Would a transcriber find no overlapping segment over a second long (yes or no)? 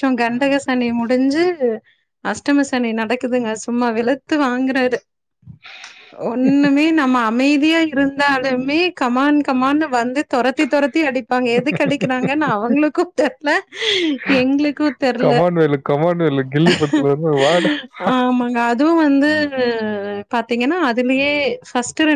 yes